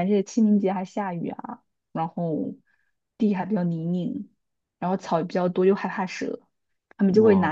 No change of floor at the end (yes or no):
yes